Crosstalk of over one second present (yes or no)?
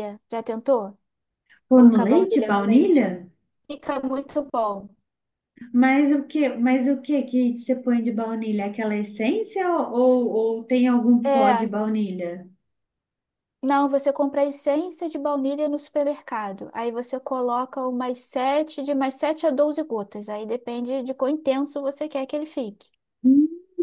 yes